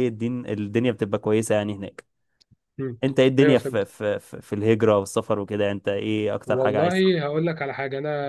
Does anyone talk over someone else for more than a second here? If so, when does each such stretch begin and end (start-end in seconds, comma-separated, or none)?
none